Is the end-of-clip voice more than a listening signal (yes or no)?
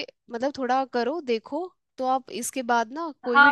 yes